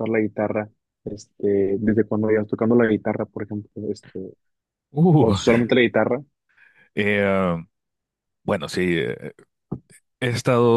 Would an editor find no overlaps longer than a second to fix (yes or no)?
yes